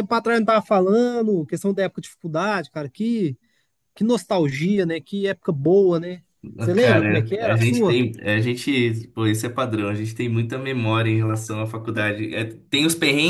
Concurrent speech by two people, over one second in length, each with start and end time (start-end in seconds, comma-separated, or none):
6.8-8.0